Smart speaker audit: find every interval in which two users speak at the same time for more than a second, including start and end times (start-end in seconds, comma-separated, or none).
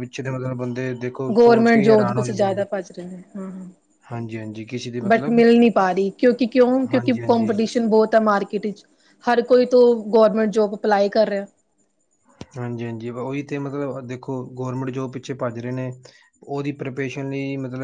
1.4-2.6